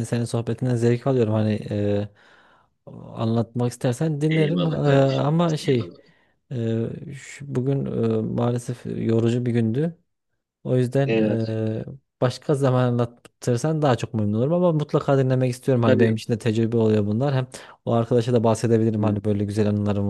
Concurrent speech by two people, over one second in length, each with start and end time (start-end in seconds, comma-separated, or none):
4.3-5.9